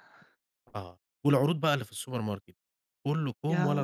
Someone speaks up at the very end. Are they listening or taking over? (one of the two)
listening